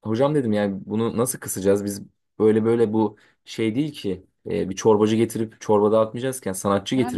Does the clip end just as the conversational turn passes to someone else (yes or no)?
yes